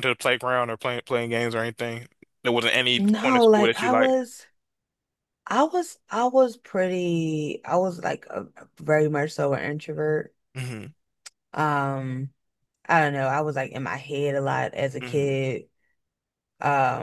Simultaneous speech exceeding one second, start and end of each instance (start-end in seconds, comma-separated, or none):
3.0-4.2